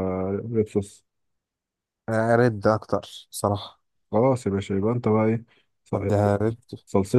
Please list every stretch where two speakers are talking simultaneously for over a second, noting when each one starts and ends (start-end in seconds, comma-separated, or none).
none